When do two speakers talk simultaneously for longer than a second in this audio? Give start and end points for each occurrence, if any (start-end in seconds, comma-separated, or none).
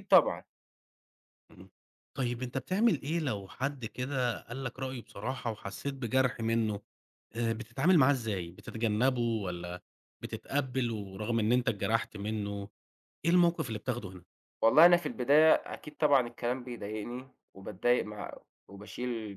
none